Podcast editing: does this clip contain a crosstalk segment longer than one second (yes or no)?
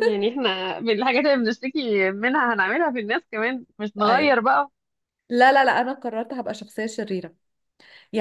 no